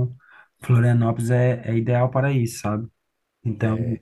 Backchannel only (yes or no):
no